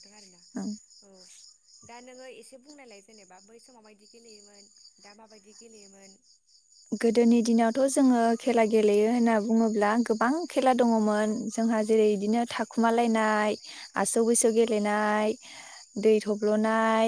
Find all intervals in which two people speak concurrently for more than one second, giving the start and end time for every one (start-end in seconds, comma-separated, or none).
none